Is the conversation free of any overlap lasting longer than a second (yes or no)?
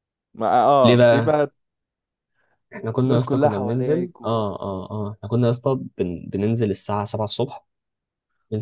no